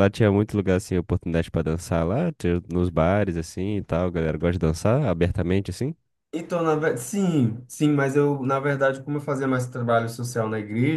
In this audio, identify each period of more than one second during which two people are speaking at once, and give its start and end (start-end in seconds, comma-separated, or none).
none